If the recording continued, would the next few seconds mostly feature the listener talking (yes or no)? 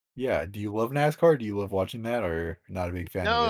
yes